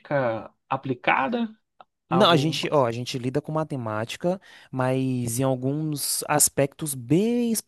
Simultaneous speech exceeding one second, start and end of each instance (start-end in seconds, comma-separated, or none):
none